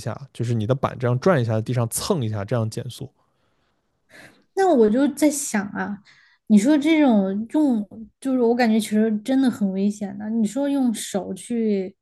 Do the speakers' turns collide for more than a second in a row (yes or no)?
no